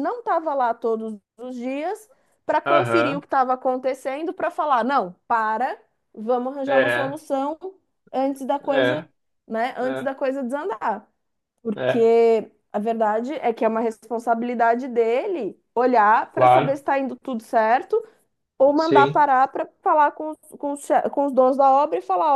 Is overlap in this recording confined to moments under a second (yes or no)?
yes